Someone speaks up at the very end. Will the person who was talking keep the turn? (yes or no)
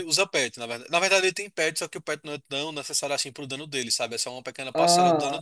no